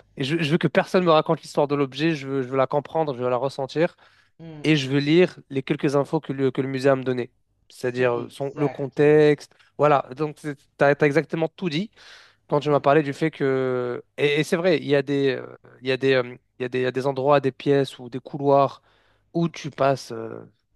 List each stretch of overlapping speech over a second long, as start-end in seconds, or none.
7.8-9.4